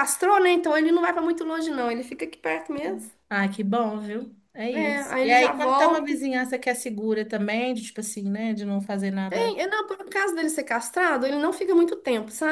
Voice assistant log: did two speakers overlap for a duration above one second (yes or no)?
yes